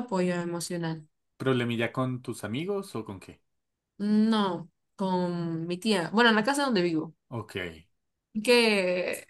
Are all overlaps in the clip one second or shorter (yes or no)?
yes